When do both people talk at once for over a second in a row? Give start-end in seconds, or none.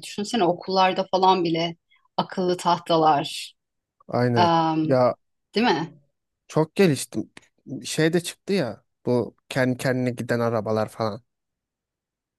none